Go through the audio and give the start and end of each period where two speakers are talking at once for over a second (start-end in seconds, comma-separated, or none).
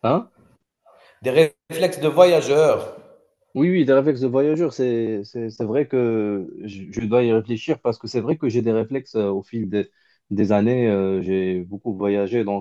none